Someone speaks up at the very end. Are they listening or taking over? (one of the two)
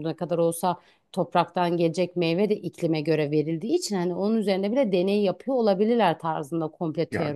taking over